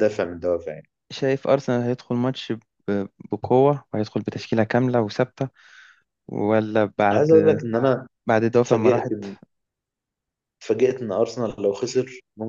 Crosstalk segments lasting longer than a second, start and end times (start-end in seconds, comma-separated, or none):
none